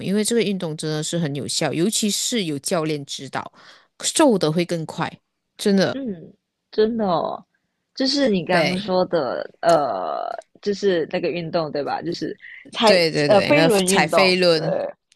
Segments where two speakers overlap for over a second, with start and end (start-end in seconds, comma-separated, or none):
12.8-14.6